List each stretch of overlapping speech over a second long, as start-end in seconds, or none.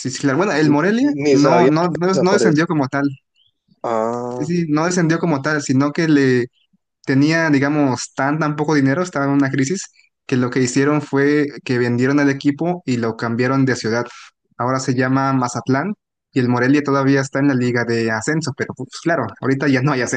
0.6-2.6